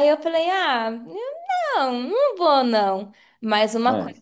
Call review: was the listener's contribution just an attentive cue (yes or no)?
yes